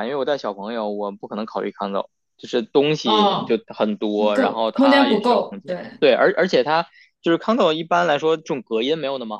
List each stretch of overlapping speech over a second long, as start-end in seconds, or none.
4.3-6.0